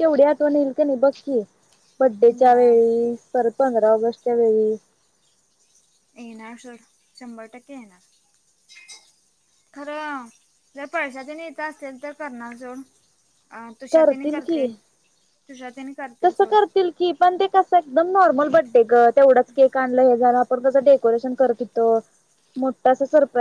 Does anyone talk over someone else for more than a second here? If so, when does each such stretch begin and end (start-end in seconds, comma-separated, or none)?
none